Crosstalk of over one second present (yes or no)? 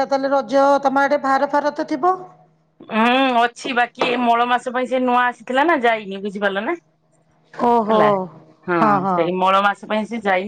no